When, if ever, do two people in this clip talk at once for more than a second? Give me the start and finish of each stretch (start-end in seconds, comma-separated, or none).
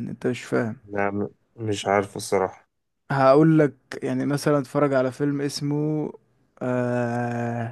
none